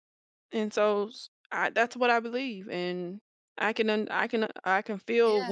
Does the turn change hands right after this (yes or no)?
no